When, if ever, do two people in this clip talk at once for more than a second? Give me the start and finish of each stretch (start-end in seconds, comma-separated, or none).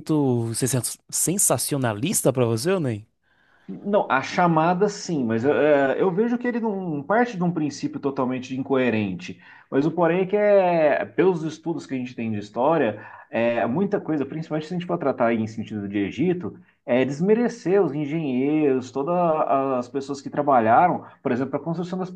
none